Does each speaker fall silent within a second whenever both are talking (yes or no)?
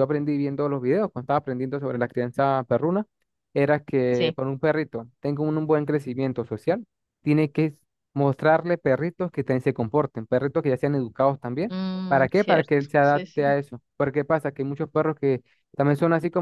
no